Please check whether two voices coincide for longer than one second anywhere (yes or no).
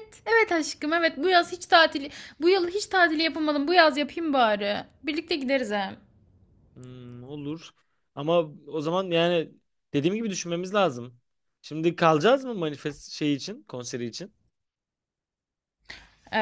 no